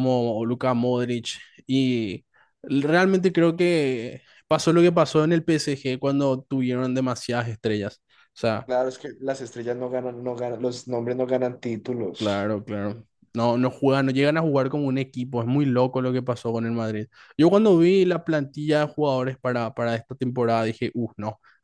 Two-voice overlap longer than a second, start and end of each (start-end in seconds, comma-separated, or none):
none